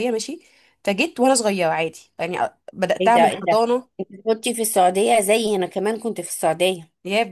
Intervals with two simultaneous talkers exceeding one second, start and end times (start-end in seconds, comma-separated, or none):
none